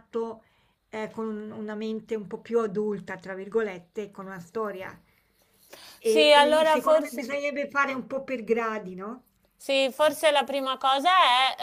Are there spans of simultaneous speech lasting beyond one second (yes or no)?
yes